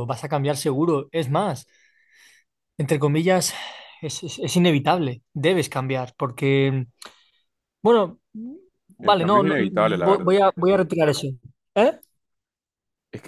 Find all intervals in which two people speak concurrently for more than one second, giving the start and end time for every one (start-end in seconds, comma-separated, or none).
9.0-10.4